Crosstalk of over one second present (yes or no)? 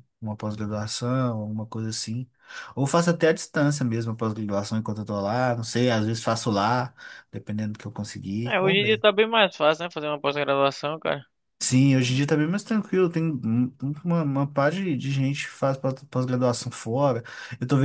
no